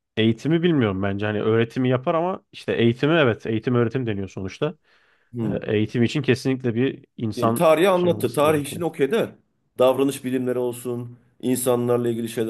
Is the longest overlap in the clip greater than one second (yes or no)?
yes